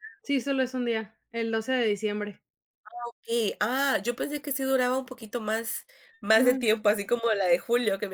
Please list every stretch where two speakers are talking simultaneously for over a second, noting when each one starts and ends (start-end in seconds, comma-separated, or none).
none